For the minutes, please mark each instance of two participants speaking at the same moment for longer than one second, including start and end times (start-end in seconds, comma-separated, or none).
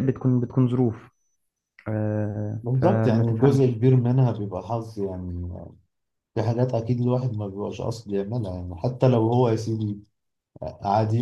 2.6-3.8